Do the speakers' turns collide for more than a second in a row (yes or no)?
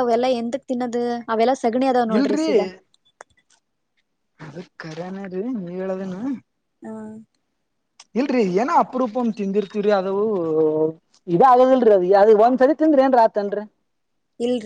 no